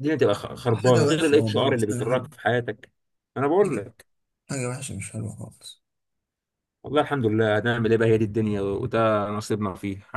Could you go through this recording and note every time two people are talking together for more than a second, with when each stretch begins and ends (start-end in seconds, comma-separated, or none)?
0.7-2.3